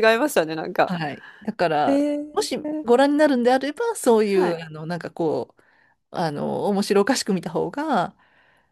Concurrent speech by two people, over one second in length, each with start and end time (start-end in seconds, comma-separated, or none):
none